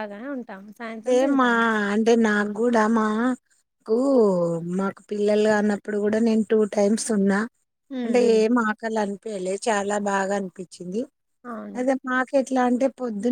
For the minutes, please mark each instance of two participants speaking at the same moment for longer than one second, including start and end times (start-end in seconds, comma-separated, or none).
none